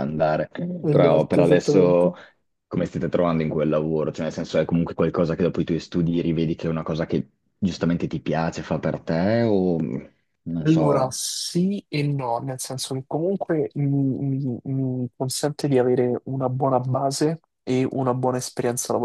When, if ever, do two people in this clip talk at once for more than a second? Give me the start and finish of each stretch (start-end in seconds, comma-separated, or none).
0.9-2.1